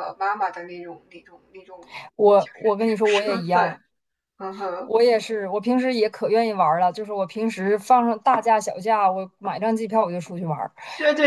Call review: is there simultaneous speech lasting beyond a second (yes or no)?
yes